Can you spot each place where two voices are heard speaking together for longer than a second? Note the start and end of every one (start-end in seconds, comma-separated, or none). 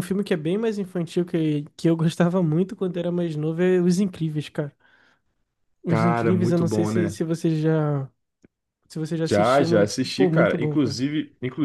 5.9-7.2, 9.2-11.0